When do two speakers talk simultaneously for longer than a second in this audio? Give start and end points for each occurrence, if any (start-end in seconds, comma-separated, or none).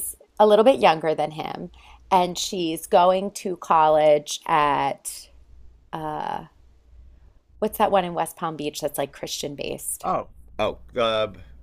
none